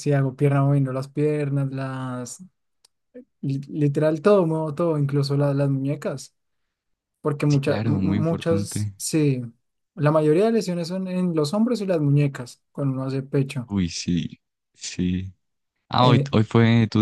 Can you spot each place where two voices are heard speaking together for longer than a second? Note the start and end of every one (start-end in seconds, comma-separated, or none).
7.5-8.9